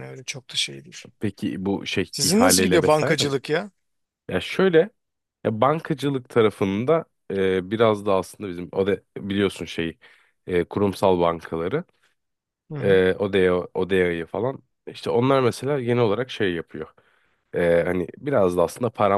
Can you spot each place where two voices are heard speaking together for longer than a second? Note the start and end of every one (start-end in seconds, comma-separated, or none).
2.1-3.3